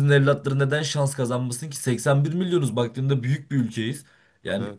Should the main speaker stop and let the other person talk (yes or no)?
no